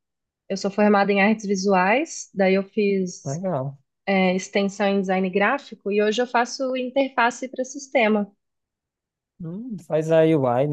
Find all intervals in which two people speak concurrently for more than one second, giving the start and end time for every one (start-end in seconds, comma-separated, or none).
none